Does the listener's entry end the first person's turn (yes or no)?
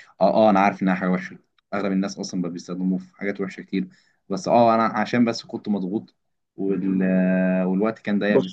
no